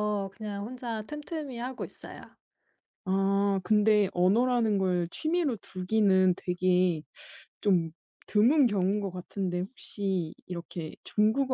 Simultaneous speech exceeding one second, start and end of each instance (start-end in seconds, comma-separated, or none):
none